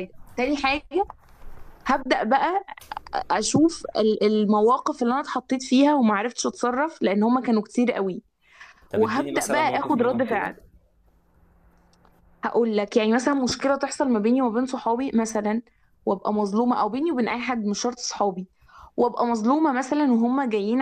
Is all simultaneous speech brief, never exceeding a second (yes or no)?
no